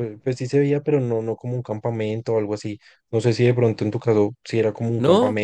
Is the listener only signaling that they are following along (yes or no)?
no